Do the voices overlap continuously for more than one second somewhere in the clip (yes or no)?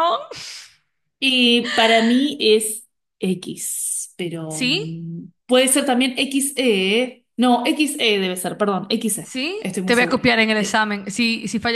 yes